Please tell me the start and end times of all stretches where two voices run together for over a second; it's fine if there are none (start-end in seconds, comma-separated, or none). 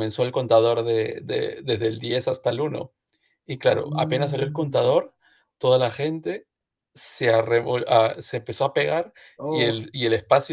3.7-4.9